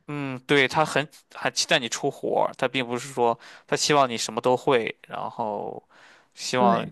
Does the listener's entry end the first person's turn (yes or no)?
no